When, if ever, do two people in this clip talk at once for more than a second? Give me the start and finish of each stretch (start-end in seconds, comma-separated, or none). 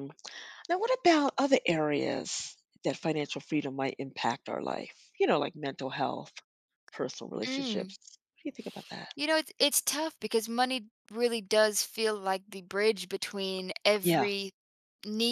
none